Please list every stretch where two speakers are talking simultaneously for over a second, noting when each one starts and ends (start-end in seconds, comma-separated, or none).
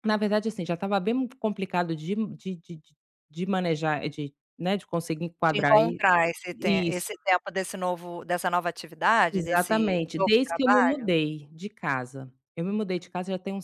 9.3-11.1